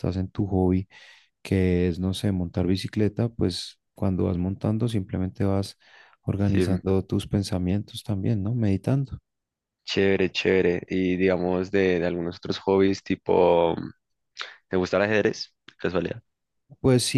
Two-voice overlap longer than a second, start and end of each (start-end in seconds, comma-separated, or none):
none